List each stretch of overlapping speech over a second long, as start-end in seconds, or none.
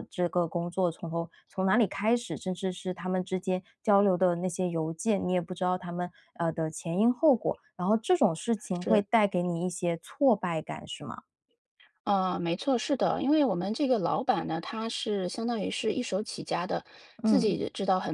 none